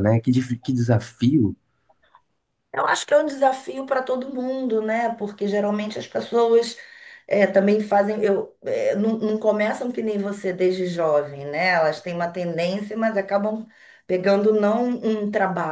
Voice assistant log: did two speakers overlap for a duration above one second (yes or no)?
no